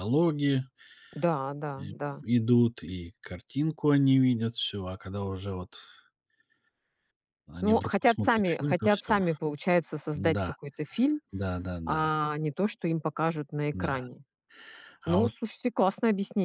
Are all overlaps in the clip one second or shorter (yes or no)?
no